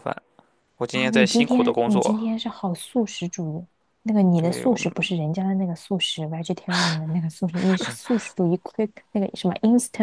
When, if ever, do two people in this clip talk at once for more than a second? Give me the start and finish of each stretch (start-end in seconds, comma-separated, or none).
0.9-2.2